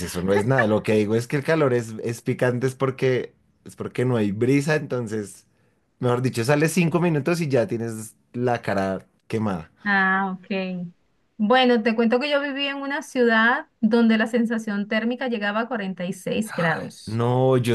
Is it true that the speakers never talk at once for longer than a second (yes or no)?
yes